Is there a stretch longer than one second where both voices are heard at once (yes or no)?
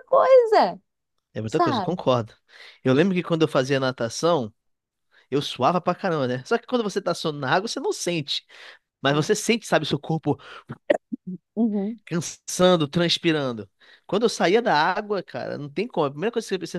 no